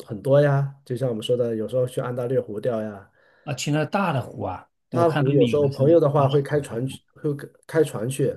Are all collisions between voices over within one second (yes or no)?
no